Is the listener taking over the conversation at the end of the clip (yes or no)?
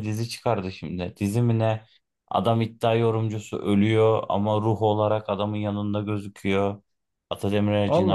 no